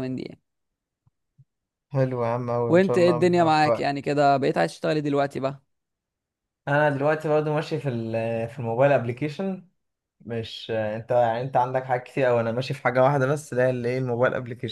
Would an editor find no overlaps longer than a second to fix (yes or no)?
no